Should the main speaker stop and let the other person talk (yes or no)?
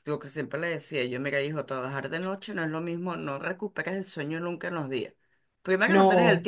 no